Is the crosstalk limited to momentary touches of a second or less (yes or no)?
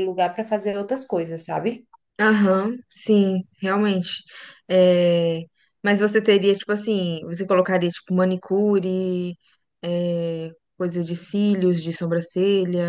yes